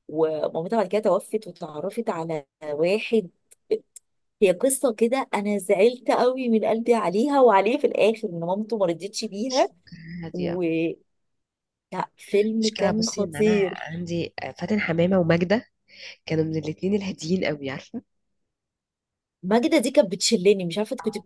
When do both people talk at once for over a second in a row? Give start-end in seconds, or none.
12.6-14.0